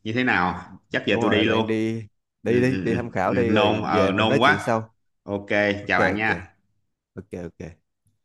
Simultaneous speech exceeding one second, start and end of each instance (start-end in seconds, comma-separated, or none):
2.4-4.7